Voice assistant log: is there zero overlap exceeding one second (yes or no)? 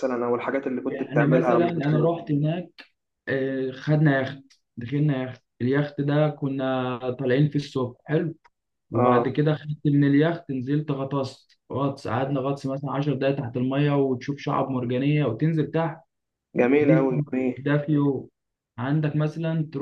no